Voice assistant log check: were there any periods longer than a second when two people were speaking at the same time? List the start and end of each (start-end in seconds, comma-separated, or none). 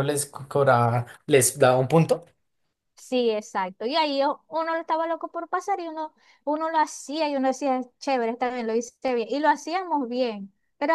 none